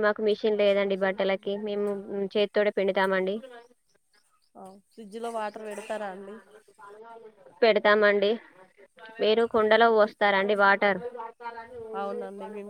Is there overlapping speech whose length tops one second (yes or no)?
no